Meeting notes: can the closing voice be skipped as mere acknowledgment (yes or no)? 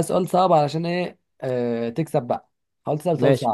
no